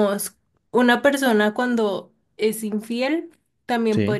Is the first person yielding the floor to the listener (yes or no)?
no